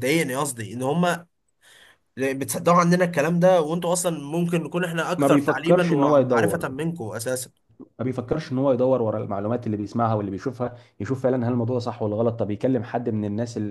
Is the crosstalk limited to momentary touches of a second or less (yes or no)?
no